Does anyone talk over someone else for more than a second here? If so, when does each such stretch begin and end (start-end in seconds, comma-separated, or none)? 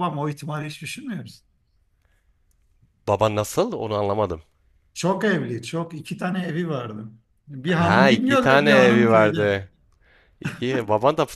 7.7-9.6